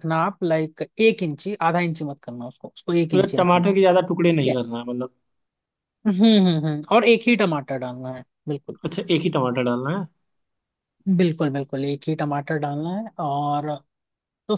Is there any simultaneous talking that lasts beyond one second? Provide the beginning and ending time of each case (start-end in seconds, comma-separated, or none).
none